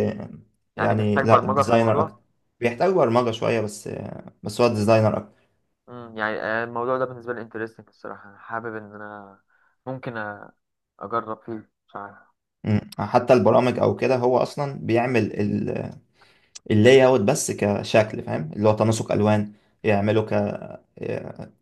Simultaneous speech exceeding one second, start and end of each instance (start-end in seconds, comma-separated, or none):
0.8-2.2